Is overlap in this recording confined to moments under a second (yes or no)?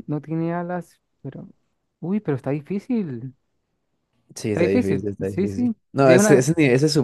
no